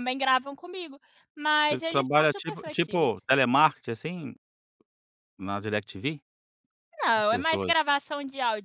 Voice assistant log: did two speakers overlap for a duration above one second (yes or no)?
yes